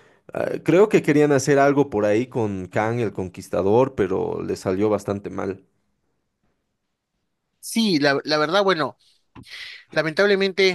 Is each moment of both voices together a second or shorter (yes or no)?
yes